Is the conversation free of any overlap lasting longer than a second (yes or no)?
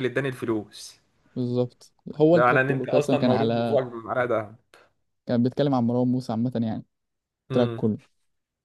no